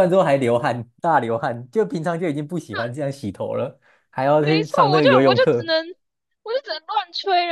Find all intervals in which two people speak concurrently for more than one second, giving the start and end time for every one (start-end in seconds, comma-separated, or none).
4.4-5.7